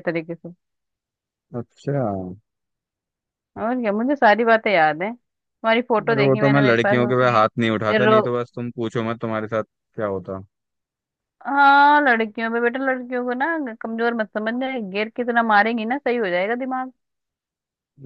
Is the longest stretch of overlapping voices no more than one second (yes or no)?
no